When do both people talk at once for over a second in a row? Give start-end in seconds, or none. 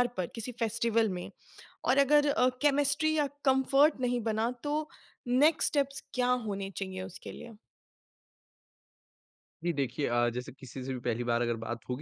none